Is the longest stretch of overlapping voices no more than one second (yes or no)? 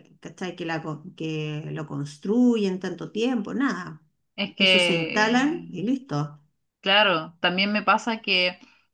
no